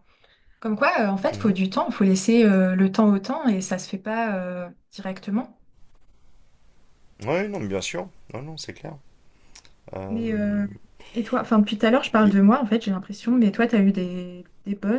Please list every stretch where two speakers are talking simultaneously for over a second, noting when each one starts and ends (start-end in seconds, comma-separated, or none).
none